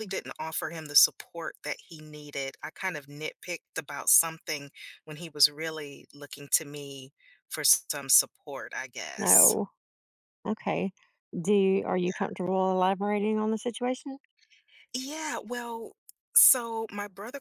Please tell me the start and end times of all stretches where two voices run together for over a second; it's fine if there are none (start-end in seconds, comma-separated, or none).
none